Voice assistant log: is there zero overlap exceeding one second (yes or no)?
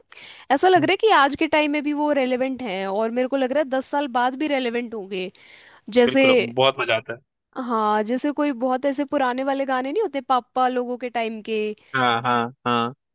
yes